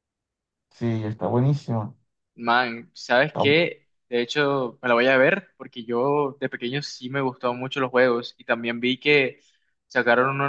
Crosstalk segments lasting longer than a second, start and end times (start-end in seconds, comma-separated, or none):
none